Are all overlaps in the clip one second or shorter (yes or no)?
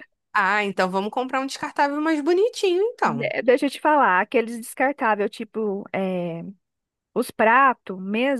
yes